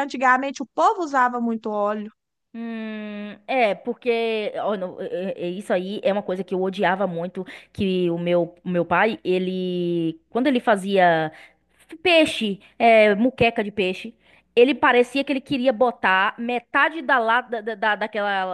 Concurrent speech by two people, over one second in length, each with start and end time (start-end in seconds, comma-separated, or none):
none